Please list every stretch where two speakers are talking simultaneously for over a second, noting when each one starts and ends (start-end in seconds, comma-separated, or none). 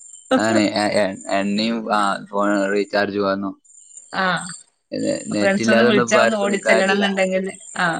5.4-7.1